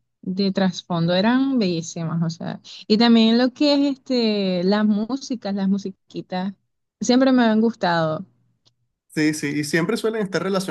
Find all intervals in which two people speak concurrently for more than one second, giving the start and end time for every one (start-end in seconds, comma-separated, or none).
none